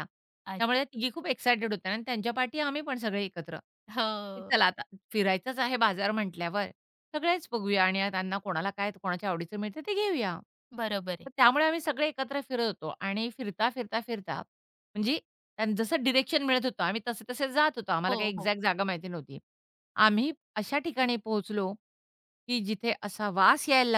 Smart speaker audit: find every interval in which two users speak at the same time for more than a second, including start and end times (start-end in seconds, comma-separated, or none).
none